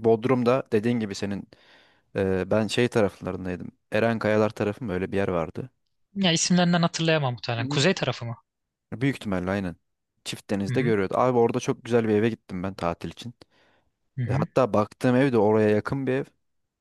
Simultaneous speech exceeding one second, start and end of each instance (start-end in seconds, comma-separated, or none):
none